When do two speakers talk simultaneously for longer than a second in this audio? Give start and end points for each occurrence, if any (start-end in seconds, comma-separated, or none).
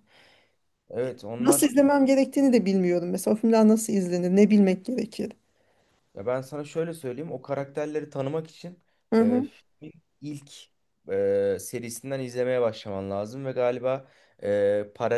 none